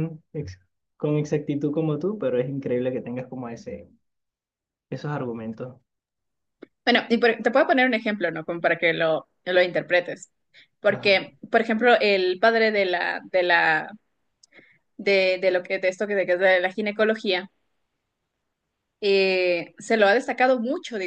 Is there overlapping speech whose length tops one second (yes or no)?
no